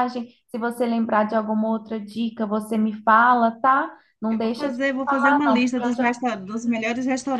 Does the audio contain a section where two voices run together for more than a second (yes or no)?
yes